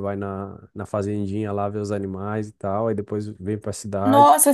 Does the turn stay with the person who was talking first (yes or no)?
no